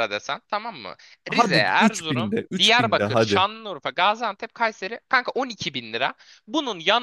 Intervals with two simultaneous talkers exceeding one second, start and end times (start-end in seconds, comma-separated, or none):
1.3-3.5